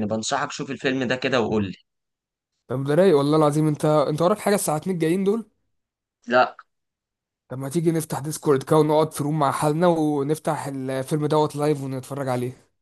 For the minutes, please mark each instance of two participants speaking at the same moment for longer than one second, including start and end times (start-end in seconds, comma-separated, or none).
none